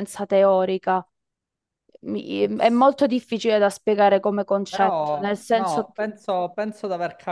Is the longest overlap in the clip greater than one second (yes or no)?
yes